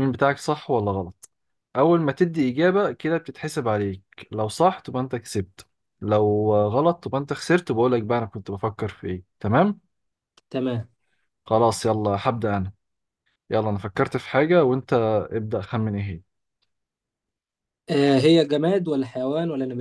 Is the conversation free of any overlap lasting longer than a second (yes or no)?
yes